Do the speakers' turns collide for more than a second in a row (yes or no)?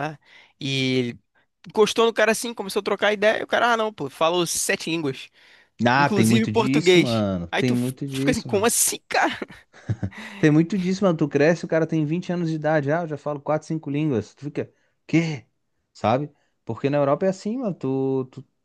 yes